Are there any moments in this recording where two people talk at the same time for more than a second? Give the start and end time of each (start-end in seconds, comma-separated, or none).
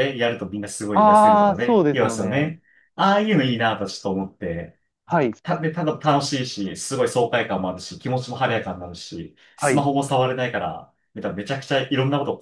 0.9-2.5